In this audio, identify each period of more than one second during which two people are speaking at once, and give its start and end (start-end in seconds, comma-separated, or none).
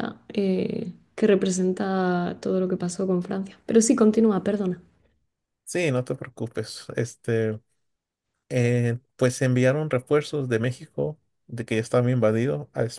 none